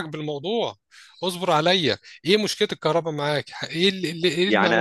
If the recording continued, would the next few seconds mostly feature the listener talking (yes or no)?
yes